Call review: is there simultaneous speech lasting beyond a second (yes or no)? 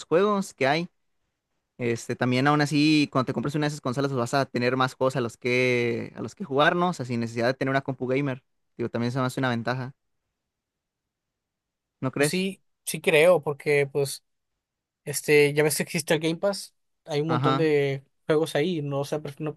no